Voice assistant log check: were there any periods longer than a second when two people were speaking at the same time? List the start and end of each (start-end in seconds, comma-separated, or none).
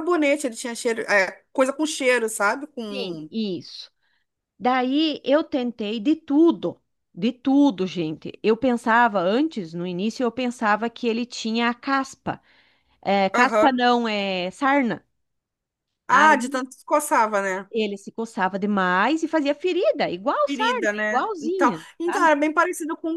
20.4-22.3